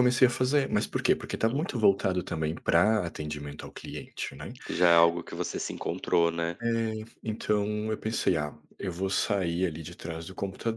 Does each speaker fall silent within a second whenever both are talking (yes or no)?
yes